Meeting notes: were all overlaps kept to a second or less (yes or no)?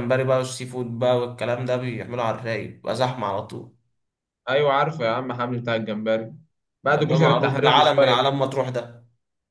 no